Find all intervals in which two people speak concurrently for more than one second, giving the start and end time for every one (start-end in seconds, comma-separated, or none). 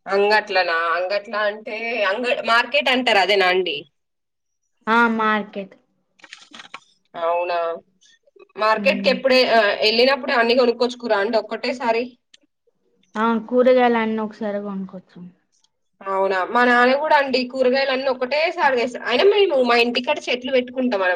none